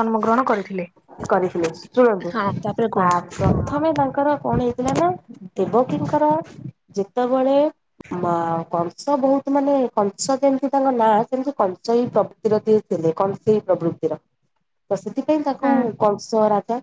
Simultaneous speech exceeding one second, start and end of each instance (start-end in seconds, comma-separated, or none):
none